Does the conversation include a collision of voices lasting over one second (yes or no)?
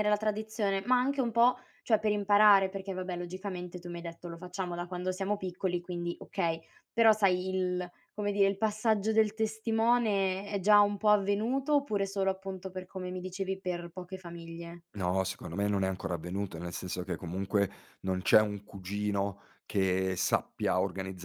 no